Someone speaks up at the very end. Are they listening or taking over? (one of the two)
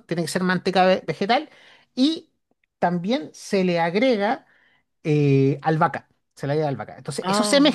listening